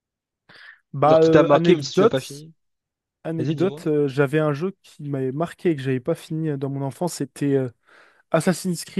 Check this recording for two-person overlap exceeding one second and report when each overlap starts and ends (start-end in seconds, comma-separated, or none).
1.0-2.5